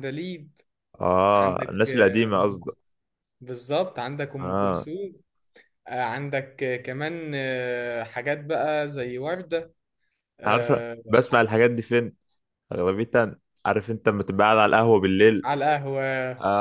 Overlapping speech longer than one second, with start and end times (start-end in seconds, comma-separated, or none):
1.4-2.8